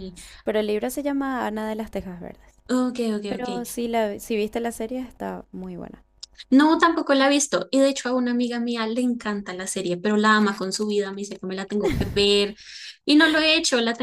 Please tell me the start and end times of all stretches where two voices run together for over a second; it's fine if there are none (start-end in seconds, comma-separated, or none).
none